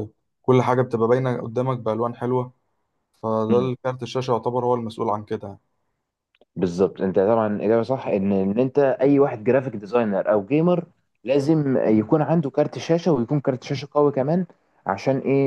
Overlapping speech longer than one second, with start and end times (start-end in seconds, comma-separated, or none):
none